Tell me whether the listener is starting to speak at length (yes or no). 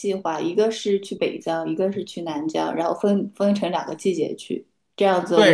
yes